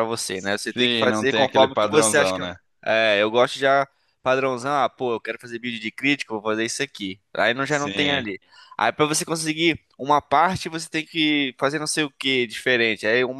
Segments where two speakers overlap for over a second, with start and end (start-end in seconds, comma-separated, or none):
0.7-2.4